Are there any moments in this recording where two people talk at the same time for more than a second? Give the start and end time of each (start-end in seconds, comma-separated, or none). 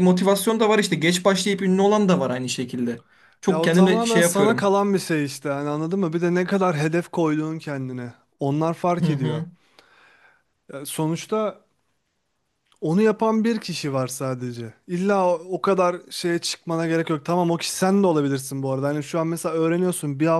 3.5-4.7